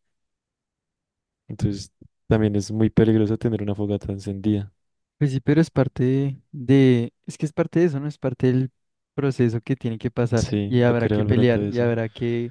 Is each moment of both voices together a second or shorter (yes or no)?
no